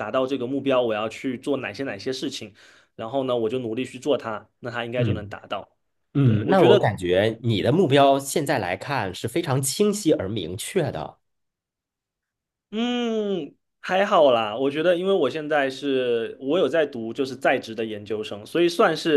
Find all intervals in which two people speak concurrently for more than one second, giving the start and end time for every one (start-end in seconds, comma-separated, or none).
none